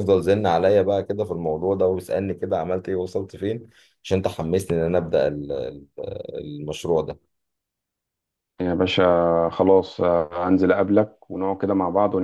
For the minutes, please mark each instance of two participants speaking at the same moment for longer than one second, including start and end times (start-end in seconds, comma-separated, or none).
none